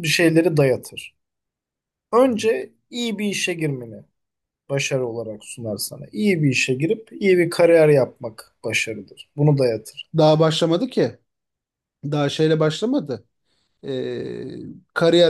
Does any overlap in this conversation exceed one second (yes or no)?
no